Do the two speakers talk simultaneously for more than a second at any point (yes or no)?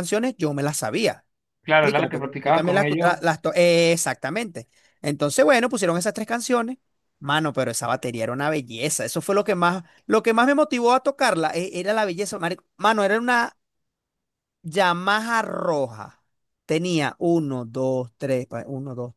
yes